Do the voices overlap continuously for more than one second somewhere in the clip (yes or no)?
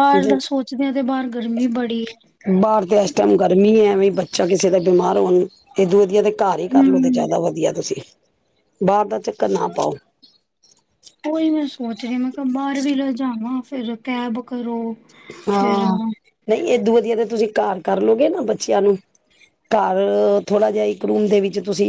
no